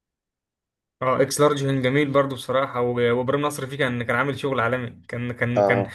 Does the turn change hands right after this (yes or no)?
no